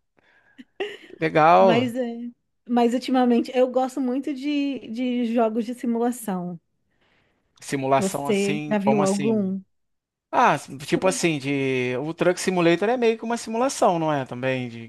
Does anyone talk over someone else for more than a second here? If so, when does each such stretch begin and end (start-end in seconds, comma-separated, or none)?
8.0-9.5